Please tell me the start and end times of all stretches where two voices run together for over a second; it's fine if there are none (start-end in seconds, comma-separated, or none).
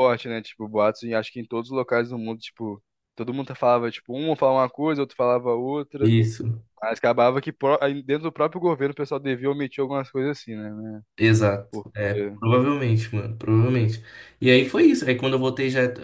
none